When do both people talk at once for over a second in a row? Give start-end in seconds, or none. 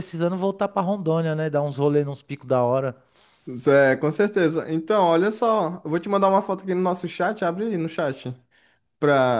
none